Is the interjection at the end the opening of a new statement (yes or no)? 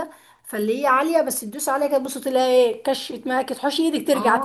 yes